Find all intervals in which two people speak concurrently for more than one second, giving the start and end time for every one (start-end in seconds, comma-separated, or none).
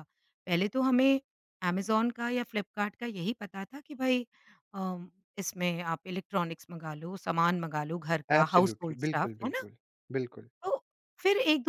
8.3-9.6